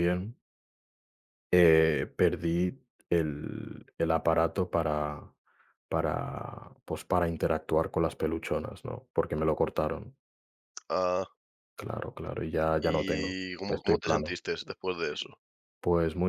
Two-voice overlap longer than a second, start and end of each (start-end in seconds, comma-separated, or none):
12.8-14.4